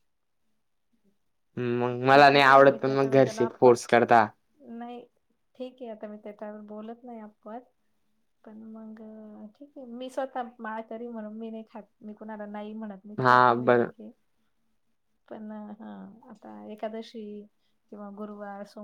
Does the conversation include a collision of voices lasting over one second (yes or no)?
yes